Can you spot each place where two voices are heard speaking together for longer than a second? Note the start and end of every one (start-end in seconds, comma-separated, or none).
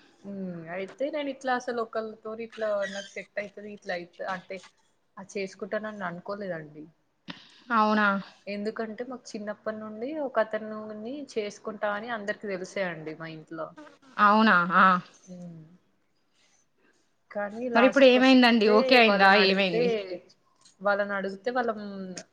17.8-19.8